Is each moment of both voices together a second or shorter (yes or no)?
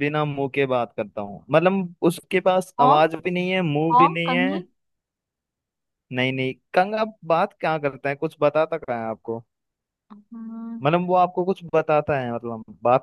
yes